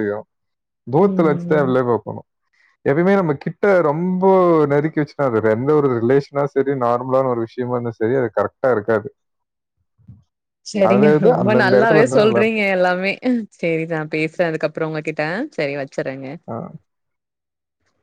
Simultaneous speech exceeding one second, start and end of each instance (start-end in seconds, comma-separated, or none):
10.9-12.7